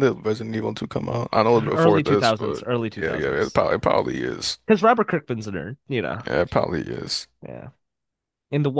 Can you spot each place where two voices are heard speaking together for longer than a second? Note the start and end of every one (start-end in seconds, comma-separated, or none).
1.7-3.6